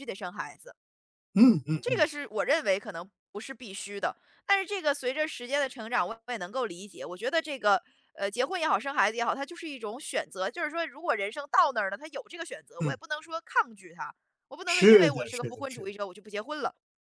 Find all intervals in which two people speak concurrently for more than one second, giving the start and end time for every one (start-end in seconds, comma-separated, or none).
14.6-15.9